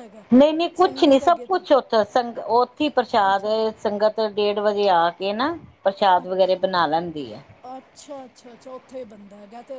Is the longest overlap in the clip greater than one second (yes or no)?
no